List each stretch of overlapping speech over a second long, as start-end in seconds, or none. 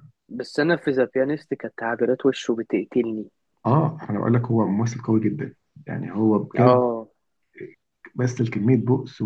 none